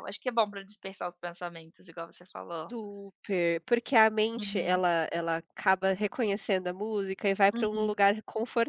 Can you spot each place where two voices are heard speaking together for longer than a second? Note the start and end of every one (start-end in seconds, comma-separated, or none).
none